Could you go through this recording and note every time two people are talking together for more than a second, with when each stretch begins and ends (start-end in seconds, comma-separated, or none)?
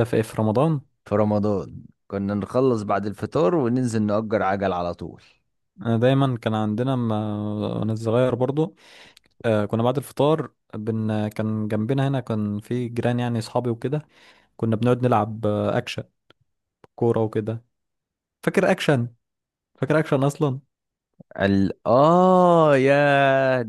none